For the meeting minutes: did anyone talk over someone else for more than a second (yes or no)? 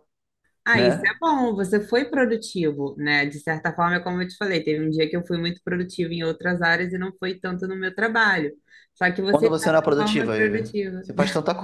yes